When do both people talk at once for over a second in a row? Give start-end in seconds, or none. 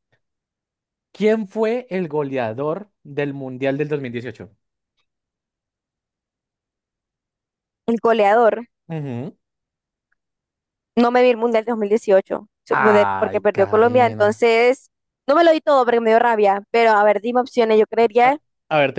12.7-14.4